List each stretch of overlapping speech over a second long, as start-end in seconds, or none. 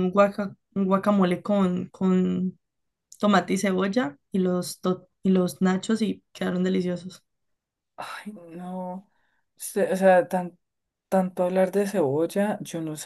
none